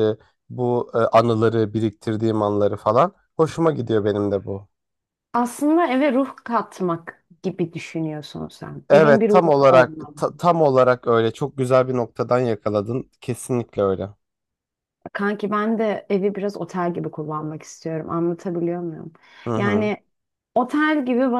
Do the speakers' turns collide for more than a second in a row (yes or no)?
yes